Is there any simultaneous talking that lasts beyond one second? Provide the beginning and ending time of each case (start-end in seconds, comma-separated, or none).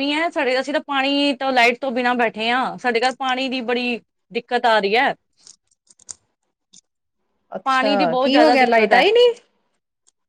7.6-9.0